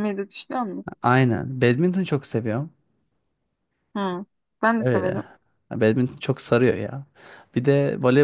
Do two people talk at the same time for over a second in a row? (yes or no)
no